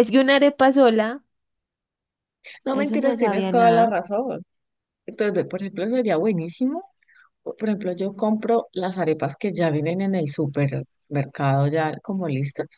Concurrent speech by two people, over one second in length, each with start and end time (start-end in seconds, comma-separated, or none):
2.7-3.9